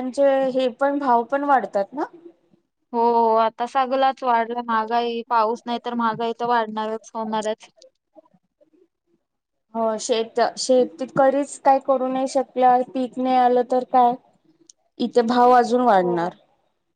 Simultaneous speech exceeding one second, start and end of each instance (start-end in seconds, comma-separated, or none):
none